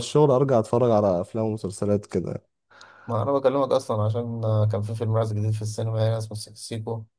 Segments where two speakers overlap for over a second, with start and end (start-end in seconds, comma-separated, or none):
none